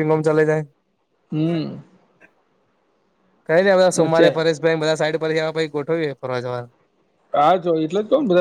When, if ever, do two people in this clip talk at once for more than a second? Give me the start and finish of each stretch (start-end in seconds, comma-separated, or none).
none